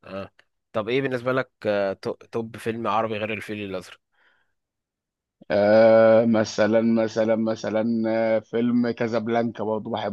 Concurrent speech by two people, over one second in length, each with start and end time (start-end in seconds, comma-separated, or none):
none